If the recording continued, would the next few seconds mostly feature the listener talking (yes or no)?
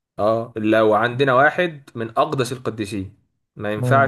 no